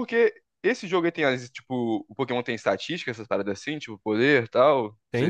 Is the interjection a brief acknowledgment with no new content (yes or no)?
no